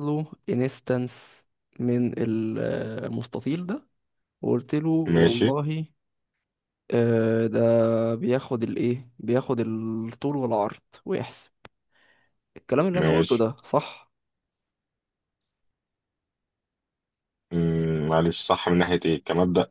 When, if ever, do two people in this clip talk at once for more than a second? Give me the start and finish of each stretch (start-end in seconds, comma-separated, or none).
none